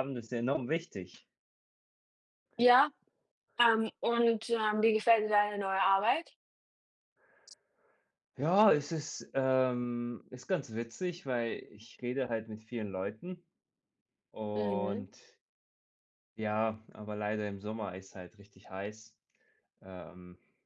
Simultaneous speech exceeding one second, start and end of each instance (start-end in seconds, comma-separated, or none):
none